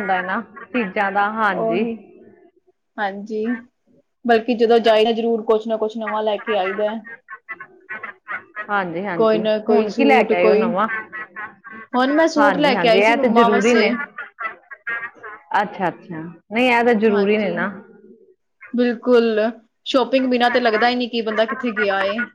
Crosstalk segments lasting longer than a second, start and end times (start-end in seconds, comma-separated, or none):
9.2-10.7, 12.4-13.9